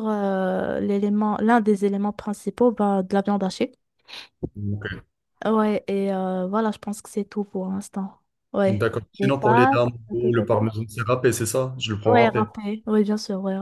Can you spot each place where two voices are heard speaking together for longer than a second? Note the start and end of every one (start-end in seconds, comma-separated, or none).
8.7-10.4